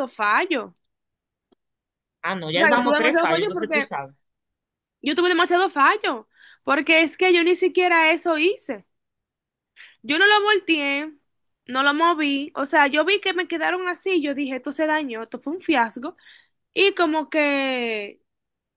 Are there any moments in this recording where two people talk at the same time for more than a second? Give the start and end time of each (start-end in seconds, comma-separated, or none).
2.5-3.9